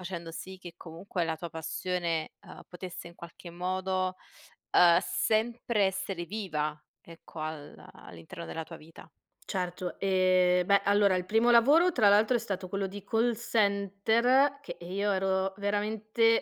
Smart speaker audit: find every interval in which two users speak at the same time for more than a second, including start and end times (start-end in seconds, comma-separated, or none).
none